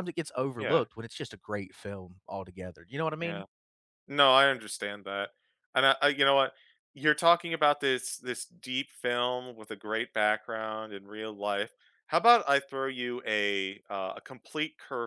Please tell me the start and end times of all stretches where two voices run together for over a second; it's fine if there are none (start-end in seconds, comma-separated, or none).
none